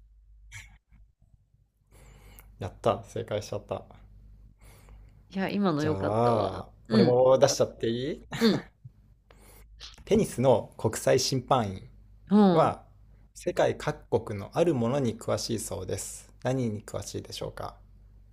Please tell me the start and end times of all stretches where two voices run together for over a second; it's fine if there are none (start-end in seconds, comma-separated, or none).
5.8-7.2